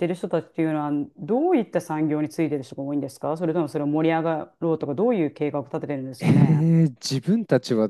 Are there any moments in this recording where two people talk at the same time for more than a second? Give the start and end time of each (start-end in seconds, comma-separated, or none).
none